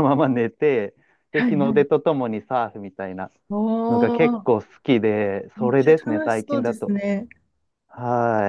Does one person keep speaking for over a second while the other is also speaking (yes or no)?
yes